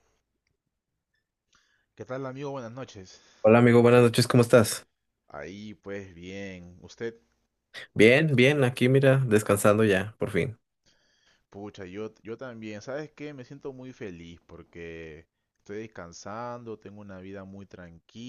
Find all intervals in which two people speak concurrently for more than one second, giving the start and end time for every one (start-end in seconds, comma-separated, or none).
none